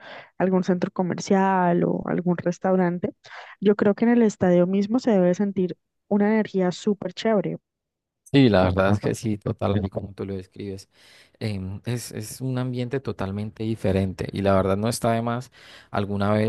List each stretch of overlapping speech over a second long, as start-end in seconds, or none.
none